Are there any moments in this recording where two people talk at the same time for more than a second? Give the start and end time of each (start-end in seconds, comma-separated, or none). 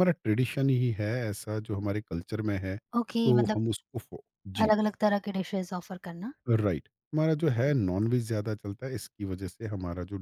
none